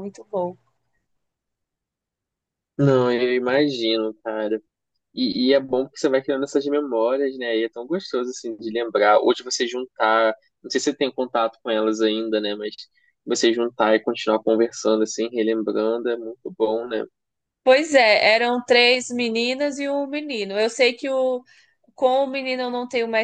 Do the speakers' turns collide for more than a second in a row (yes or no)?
no